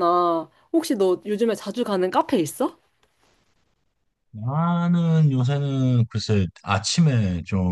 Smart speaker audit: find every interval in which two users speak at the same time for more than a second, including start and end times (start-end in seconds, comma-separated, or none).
none